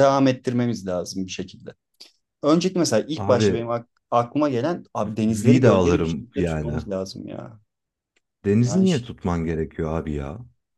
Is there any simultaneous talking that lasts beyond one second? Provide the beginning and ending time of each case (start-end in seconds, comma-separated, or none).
5.3-6.8